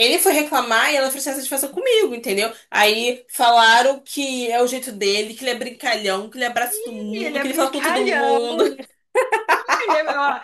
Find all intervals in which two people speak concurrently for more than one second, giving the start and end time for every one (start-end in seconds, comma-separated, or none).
7.1-8.5